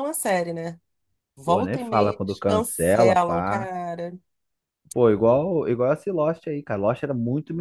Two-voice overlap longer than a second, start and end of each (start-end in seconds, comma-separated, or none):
1.4-3.7